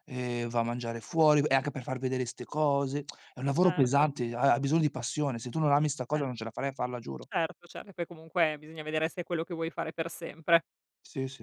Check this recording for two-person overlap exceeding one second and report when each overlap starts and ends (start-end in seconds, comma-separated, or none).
none